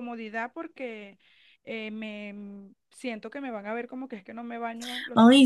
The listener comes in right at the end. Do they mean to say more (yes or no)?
yes